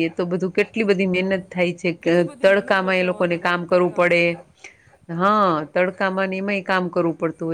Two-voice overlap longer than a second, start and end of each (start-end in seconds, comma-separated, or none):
2.0-4.2